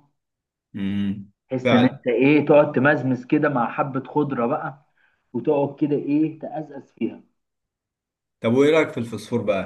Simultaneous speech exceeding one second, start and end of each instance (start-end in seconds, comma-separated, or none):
none